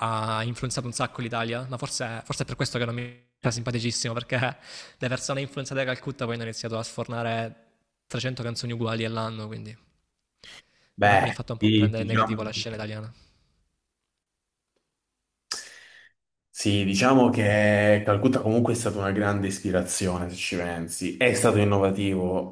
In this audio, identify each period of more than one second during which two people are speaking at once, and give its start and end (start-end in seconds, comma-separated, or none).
11.0-12.5